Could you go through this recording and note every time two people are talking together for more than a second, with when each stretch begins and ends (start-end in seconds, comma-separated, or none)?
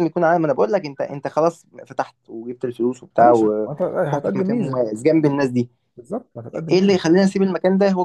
3.2-4.8